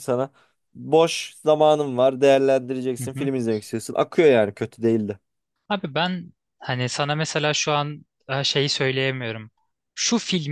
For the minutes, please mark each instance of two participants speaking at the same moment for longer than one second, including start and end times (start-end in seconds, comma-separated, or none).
none